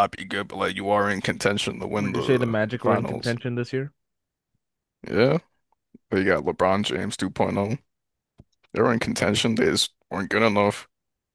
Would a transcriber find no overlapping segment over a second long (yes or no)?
no